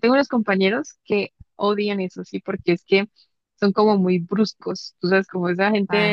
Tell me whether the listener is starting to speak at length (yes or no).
no